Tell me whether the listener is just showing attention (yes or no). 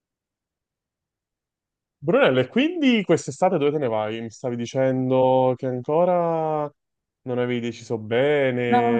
yes